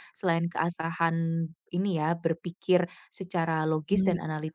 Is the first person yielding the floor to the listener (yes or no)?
no